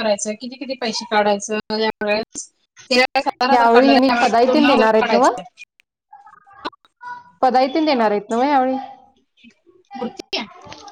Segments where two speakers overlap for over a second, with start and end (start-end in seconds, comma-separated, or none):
3.5-5.3